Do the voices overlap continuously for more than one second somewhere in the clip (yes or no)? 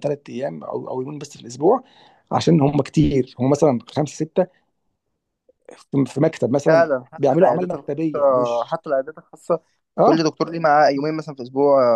yes